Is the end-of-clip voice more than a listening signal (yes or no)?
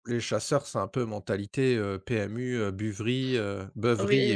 yes